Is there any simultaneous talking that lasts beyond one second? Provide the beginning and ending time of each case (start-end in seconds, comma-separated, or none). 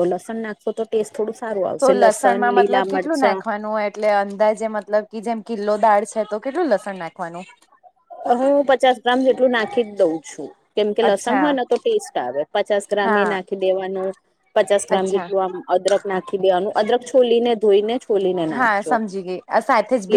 1.8-3.4